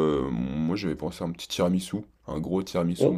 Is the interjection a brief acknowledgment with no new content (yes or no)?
no